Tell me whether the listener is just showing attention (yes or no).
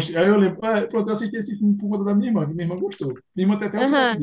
no